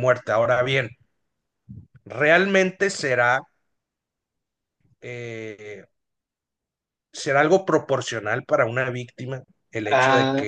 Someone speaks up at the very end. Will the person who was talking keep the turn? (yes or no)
yes